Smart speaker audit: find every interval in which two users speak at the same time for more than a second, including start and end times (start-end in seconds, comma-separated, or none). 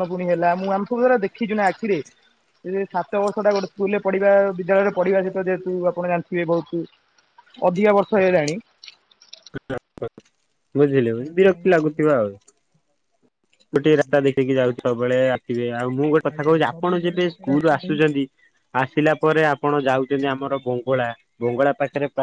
16.3-18.0